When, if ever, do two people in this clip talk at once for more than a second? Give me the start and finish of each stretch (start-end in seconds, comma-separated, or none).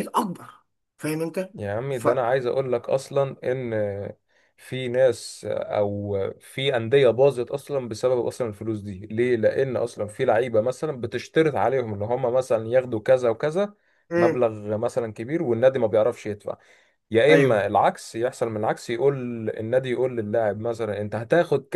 none